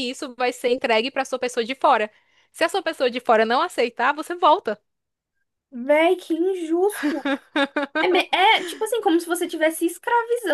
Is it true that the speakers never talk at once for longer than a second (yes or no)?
yes